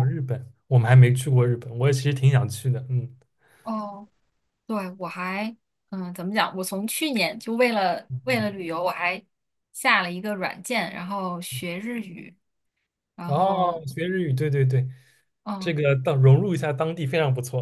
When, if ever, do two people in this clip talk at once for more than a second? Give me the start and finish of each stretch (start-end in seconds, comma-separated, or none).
none